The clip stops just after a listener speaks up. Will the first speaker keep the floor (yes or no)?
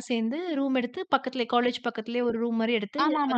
no